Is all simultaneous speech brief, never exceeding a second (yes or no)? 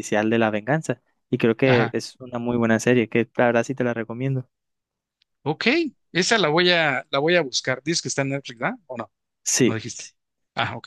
yes